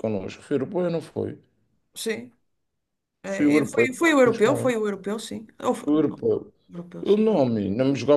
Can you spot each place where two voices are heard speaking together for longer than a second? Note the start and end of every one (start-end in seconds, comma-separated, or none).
3.3-4.7